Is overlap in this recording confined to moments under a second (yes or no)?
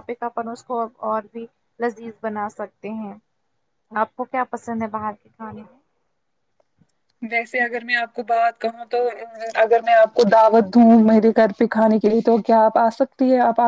yes